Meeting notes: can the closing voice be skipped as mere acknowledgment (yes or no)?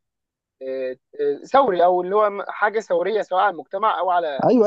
no